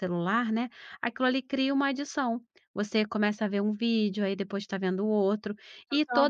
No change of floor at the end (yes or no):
yes